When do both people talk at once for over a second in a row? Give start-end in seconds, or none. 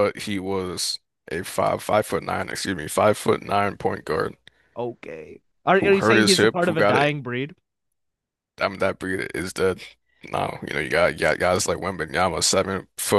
5.8-7.1